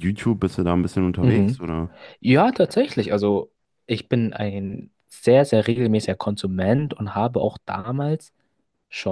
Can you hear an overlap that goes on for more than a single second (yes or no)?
no